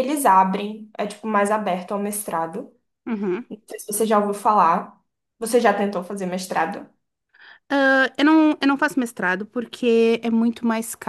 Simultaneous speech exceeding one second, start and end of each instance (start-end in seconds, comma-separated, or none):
none